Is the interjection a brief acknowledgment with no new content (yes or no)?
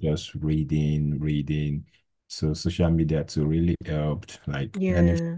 yes